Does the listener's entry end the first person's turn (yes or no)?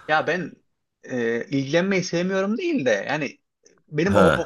no